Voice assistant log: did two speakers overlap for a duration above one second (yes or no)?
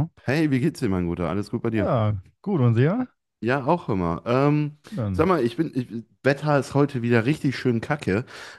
no